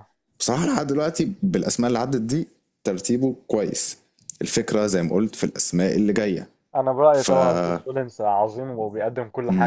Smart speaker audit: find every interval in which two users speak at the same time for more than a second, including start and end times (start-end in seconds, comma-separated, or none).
none